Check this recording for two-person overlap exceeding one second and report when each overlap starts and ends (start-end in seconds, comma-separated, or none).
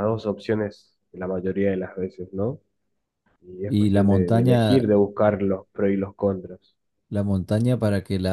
3.6-4.9